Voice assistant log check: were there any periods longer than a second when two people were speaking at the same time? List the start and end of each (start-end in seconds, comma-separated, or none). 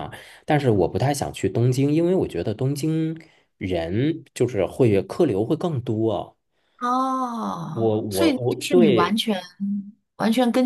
7.7-9.2